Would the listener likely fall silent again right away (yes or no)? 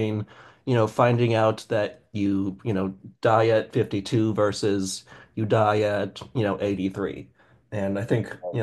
yes